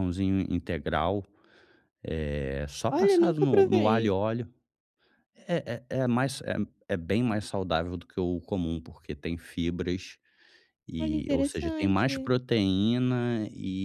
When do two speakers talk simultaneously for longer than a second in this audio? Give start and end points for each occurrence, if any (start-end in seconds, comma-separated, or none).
2.9-4.2, 11.0-12.3